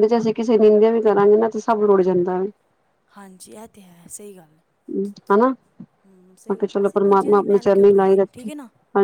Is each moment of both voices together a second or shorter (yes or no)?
no